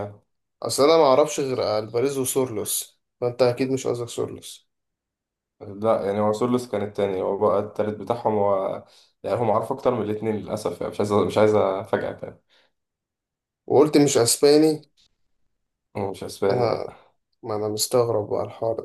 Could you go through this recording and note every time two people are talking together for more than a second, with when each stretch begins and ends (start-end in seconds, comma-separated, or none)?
none